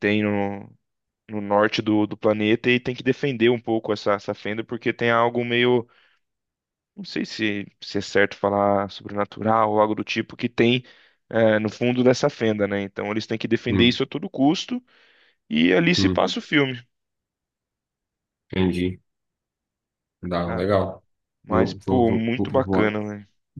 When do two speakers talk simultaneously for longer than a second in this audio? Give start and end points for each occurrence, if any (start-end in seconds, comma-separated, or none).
21.5-23.0